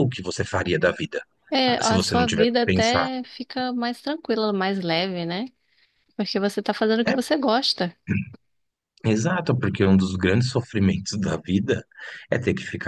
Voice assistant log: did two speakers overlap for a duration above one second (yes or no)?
yes